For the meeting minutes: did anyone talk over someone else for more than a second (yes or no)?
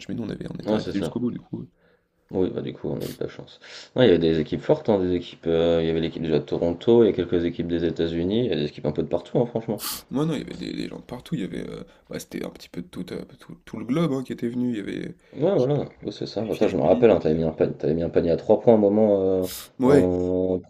yes